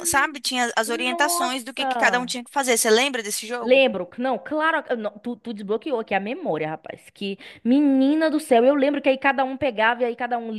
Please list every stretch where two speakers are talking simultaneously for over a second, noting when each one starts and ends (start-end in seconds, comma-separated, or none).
1.1-2.3